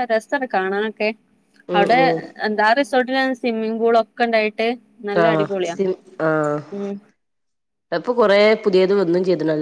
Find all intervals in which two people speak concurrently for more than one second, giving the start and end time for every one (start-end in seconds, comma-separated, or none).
none